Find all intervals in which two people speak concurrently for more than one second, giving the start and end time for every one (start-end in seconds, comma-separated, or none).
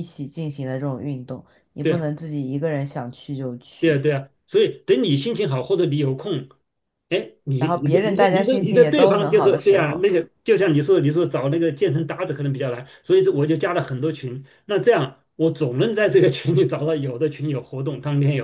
7.6-10.1